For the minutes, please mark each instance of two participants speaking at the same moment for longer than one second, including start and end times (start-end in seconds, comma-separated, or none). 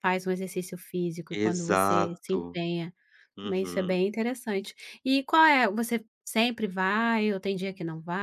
1.3-2.6